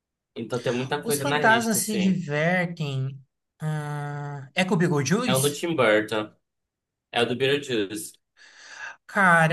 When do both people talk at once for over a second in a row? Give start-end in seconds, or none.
1.0-2.2